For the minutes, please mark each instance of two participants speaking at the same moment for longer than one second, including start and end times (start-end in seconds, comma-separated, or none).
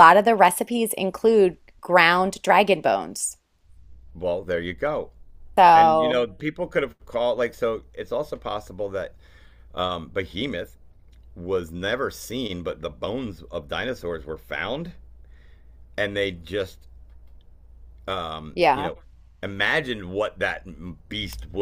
none